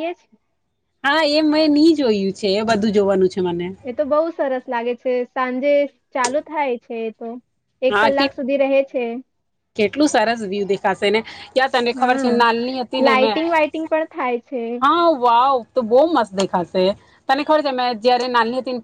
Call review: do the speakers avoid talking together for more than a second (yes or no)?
yes